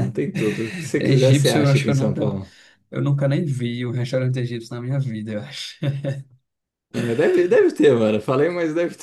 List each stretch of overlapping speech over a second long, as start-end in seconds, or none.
1.0-2.3